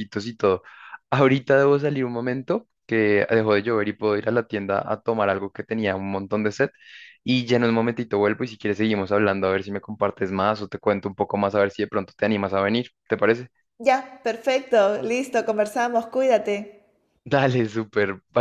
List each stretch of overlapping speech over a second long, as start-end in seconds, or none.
none